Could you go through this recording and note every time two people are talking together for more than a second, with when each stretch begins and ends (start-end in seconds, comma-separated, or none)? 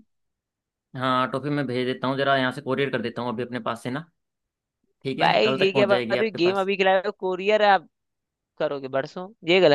5.2-6.7